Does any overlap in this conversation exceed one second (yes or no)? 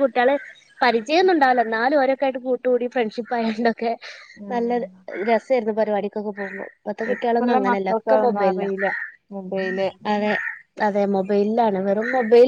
yes